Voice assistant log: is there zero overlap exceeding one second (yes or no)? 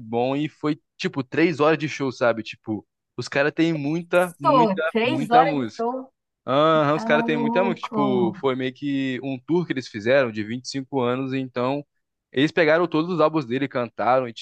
no